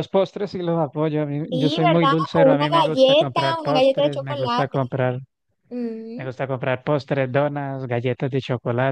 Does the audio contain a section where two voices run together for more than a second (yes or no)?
yes